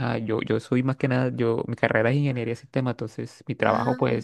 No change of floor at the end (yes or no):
yes